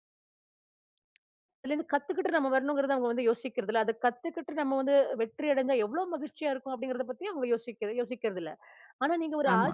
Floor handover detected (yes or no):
no